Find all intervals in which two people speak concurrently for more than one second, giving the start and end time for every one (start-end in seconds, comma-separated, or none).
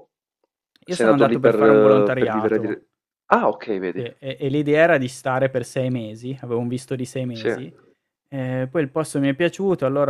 0.9-2.8